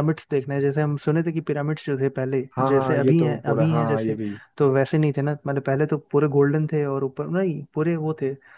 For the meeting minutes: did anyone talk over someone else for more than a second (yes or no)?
yes